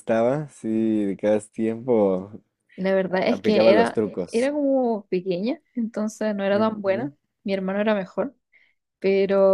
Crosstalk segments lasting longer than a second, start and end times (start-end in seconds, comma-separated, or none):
3.1-4.5